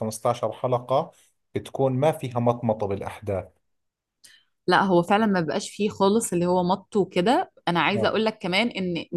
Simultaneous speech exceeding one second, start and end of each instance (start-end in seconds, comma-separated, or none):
none